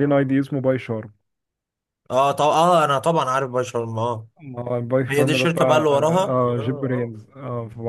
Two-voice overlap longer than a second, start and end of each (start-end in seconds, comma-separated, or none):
5.1-7.1